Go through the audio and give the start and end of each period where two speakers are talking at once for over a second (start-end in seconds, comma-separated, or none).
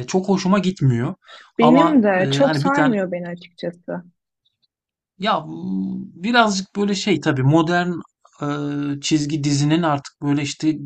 1.6-2.9